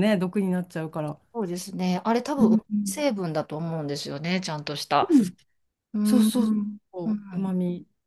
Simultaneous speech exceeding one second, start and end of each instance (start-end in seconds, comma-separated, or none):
6.0-7.6